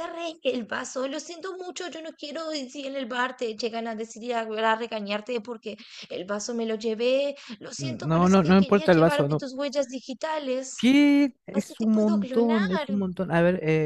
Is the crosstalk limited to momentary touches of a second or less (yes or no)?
no